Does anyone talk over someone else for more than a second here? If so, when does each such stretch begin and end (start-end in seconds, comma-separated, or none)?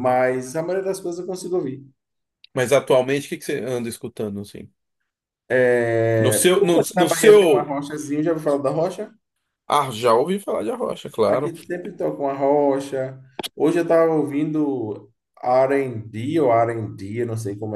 6.2-7.7